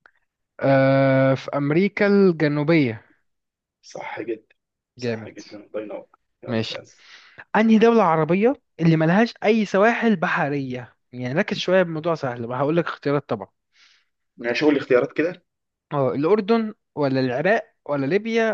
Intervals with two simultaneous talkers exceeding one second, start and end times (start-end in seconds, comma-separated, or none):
none